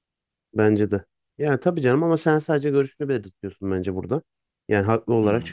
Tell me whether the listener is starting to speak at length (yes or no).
no